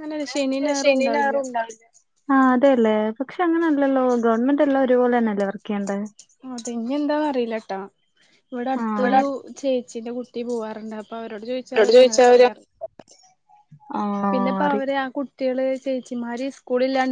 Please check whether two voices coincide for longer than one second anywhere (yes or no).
no